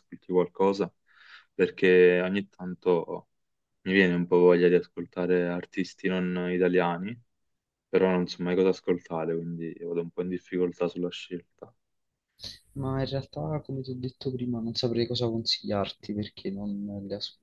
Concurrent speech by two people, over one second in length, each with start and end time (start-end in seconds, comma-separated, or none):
none